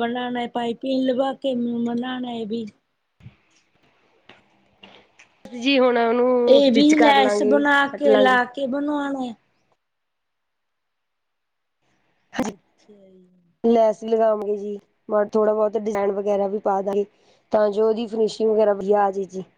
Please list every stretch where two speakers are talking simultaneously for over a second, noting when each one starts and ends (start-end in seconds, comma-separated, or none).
6.5-8.4